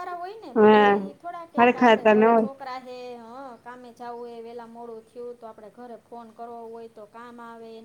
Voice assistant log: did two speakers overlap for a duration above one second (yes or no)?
yes